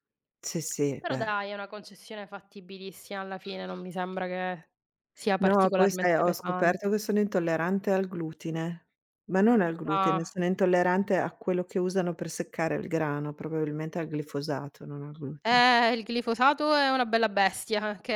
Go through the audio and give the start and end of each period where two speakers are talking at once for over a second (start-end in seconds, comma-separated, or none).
5.4-6.9